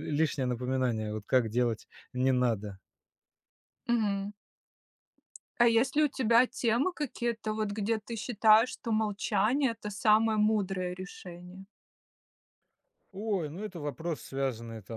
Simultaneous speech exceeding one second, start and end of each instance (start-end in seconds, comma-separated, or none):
none